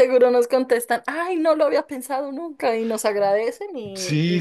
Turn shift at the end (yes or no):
yes